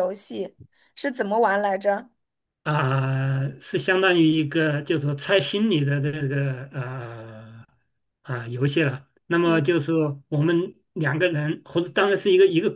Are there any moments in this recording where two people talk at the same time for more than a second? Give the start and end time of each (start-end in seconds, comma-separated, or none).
none